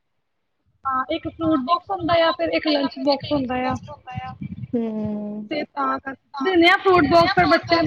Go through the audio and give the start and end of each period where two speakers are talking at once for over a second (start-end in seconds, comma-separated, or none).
1.4-3.3